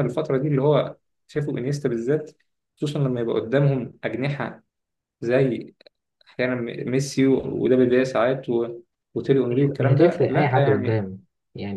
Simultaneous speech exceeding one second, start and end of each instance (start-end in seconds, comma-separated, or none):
9.5-11.0